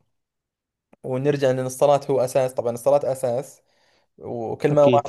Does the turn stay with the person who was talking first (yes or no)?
yes